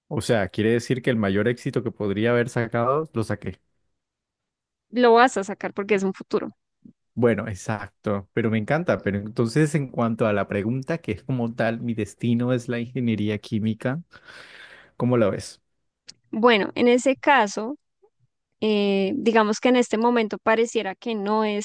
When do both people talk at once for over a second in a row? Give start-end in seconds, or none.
none